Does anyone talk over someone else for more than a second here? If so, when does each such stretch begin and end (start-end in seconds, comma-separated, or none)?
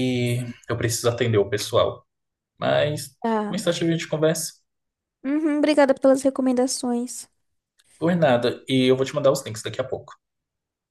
none